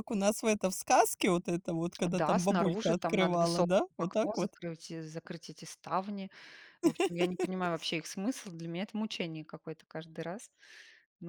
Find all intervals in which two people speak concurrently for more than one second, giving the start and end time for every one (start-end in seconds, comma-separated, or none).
2.0-4.5